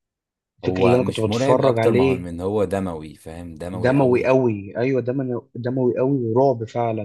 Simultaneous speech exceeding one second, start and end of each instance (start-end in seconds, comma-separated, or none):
0.7-2.3